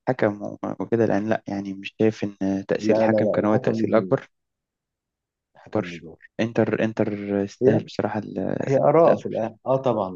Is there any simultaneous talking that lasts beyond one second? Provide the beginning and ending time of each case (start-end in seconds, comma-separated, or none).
2.8-4.2